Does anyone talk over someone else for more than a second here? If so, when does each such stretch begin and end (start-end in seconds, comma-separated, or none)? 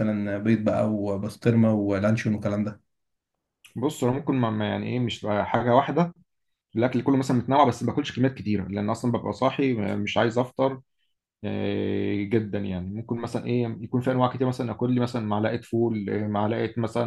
none